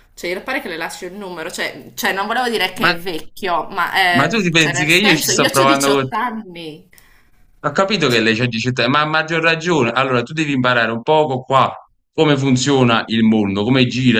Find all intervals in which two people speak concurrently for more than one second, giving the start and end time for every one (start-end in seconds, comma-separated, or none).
4.2-6.1